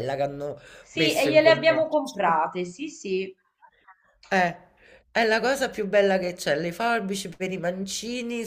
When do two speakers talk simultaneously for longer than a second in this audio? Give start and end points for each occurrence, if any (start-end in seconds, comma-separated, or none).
0.9-2.2